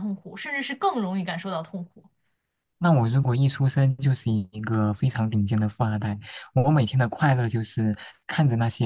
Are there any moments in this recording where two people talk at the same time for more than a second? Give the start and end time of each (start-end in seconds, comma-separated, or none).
none